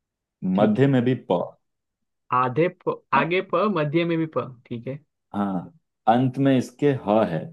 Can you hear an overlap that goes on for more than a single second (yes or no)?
no